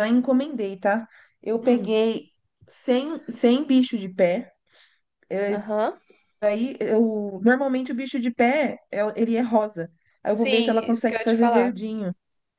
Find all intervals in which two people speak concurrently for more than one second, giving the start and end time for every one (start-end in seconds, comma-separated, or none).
10.2-11.8